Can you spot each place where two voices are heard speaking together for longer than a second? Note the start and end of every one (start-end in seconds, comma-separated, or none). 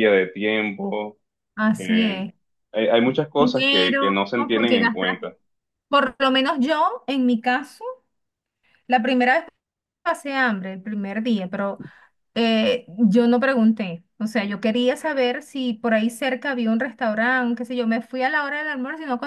3.4-5.2